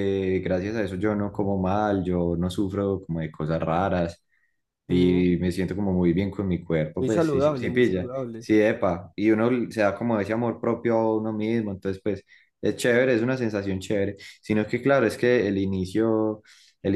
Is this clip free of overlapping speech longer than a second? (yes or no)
no